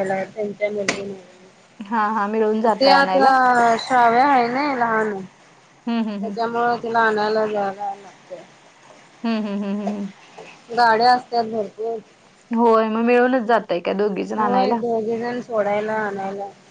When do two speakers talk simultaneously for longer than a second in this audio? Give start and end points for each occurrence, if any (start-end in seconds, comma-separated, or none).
none